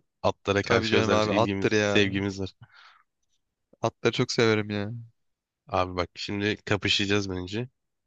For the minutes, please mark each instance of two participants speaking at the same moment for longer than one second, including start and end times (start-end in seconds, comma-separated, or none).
0.6-2.0